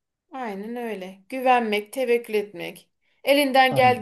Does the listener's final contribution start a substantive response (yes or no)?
no